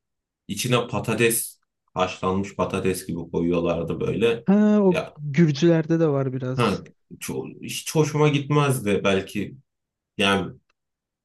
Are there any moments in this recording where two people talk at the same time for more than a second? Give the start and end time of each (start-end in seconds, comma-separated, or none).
none